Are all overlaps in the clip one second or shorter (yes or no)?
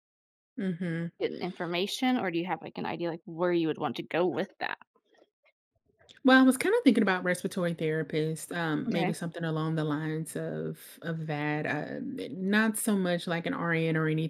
yes